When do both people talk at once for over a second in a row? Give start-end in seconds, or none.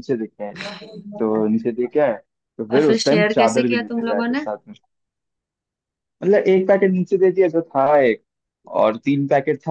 2.8-4.5